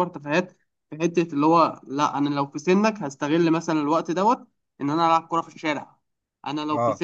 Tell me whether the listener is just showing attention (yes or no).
no